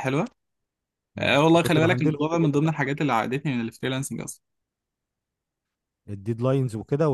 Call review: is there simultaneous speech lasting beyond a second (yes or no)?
yes